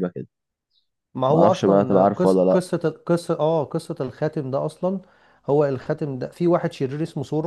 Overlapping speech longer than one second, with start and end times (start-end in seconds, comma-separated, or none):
1.3-2.6